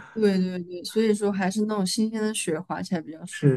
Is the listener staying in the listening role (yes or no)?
no